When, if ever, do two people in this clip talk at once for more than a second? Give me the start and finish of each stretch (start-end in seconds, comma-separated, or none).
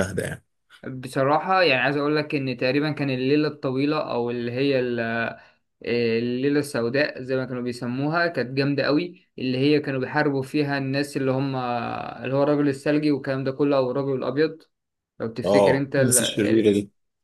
15.4-16.7